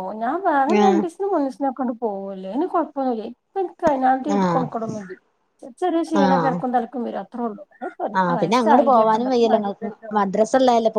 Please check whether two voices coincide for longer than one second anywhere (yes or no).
yes